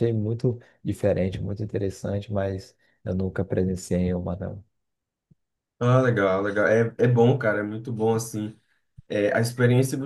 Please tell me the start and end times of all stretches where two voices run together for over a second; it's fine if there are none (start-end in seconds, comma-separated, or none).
none